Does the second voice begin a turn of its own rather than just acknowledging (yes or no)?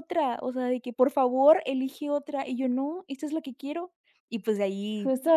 yes